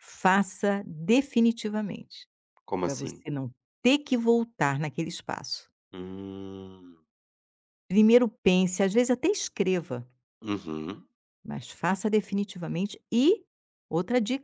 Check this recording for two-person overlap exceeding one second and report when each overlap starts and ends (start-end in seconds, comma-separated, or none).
none